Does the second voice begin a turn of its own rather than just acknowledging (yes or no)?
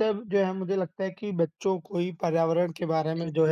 no